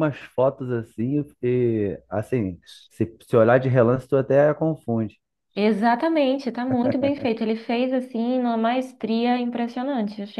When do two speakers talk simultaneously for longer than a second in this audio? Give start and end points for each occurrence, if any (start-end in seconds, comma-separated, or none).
none